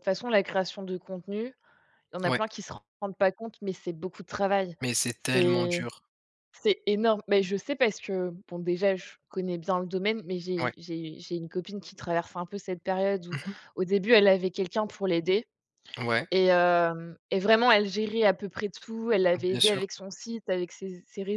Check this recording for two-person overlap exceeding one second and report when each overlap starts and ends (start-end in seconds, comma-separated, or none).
none